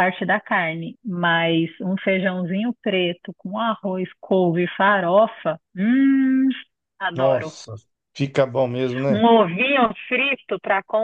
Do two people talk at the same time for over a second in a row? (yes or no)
no